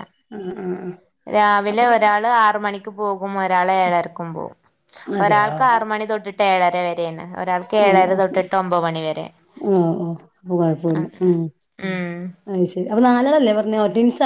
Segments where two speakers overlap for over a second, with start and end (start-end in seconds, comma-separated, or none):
none